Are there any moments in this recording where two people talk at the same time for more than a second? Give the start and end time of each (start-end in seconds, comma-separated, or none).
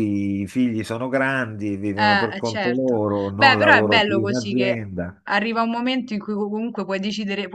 2.0-4.8